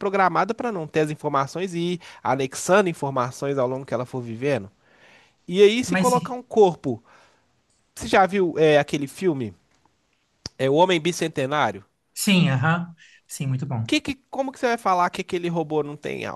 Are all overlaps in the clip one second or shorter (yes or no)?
yes